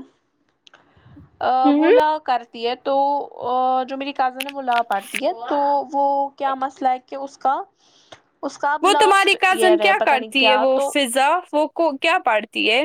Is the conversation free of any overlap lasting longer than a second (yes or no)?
no